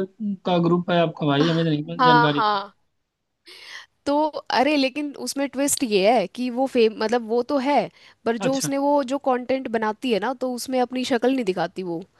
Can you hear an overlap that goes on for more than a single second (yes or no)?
no